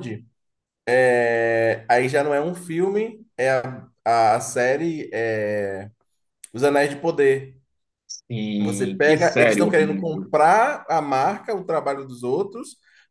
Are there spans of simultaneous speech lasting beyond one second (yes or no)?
yes